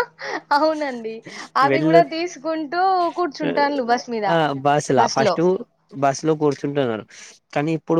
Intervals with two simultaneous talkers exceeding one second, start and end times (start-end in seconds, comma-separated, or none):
none